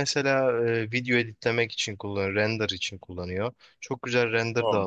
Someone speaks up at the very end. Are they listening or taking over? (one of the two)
listening